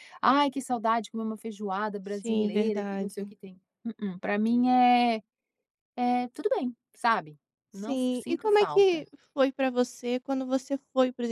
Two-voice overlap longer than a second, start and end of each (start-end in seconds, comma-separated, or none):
2.0-3.3, 7.7-9.0